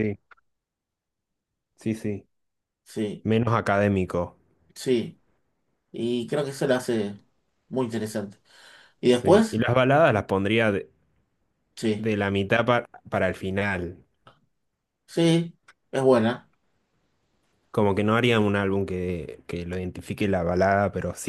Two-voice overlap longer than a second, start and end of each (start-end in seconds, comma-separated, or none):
none